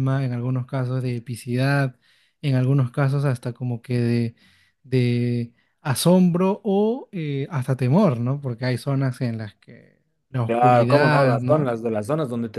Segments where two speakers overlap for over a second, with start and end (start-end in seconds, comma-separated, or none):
10.4-11.7